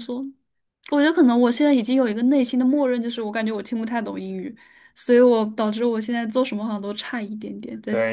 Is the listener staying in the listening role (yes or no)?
no